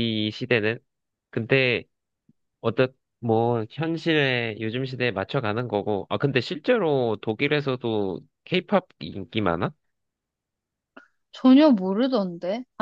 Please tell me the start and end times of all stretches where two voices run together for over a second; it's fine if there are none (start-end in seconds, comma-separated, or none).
none